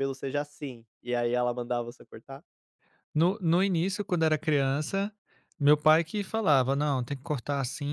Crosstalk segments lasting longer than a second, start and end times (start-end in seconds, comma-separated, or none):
none